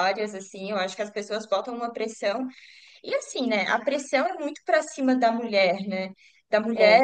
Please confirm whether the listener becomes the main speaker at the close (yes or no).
no